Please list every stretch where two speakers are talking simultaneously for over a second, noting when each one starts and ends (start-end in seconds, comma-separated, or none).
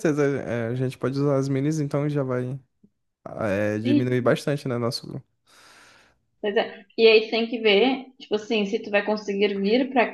none